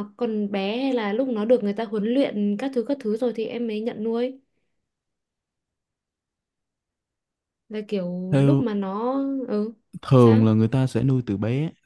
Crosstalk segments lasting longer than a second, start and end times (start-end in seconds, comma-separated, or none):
none